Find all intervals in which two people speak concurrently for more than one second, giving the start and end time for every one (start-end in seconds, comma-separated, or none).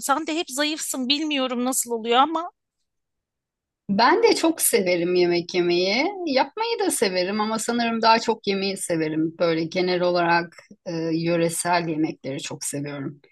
none